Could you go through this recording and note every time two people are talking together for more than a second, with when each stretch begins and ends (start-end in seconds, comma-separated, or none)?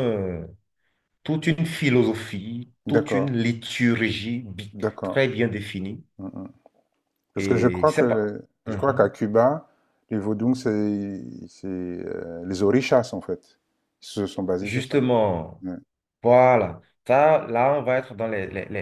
7.4-9.1